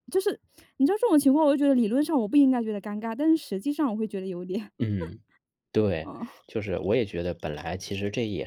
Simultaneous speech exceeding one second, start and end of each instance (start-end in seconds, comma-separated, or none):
none